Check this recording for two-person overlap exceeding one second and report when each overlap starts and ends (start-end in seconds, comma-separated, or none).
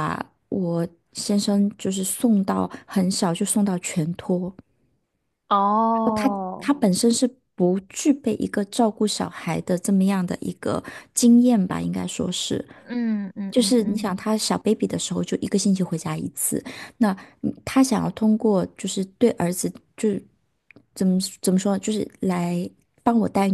none